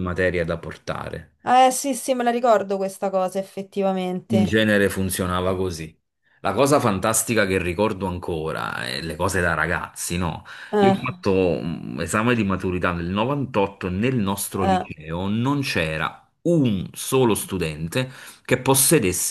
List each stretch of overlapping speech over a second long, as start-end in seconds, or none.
none